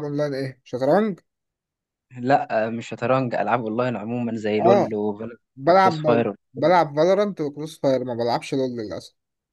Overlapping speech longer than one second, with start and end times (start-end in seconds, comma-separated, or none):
none